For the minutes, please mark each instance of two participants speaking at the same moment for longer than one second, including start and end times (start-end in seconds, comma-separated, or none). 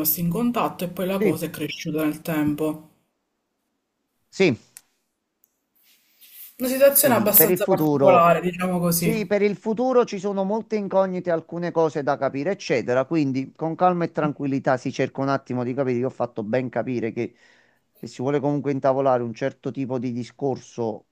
7.0-8.3